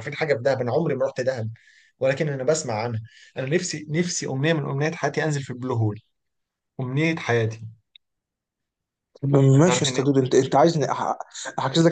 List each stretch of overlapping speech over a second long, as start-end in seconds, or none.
none